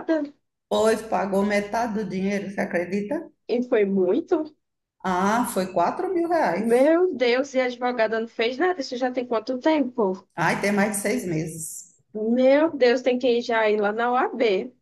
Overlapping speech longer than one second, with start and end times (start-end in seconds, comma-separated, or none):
none